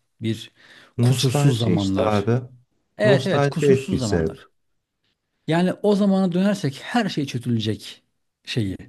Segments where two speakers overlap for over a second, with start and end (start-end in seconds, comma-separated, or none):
1.0-2.2, 3.0-4.4